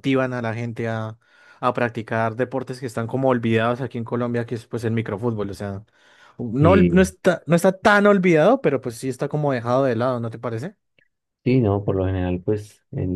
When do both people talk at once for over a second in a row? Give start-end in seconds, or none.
none